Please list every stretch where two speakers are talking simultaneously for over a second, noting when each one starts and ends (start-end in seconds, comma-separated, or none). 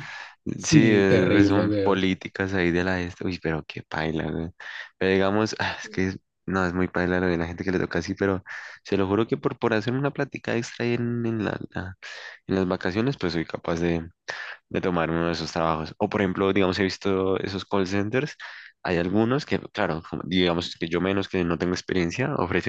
0.6-2.0